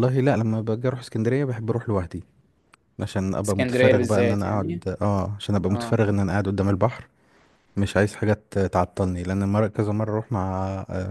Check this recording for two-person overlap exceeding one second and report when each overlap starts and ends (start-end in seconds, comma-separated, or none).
3.5-4.8